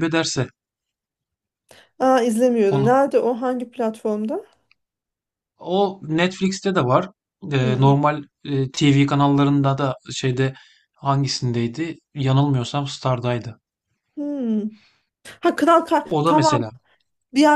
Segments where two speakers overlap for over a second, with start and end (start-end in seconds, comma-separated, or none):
none